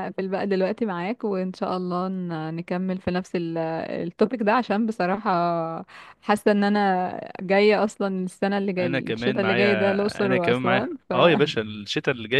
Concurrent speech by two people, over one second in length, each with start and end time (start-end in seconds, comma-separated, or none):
8.8-11.1